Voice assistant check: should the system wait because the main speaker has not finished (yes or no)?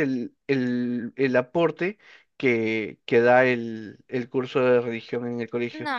no